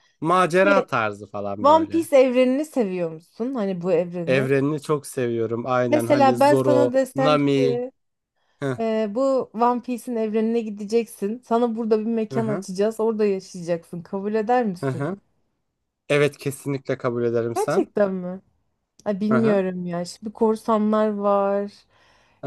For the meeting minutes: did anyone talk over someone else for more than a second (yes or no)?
yes